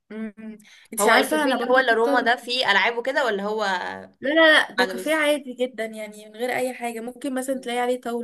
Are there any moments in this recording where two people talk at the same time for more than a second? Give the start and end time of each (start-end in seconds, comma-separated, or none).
1.0-2.3